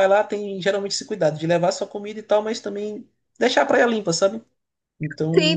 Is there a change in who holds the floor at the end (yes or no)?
yes